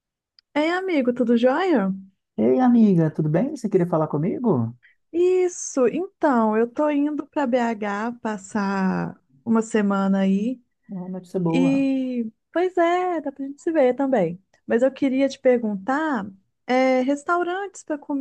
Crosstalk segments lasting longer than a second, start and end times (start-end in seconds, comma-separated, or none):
none